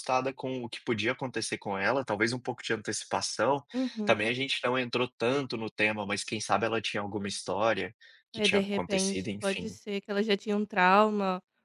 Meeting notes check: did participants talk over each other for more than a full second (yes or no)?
yes